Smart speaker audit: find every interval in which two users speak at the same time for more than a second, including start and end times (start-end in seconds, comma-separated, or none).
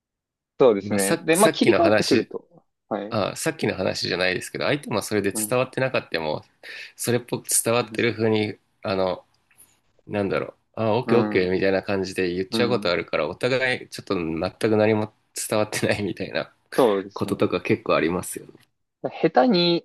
0.8-2.3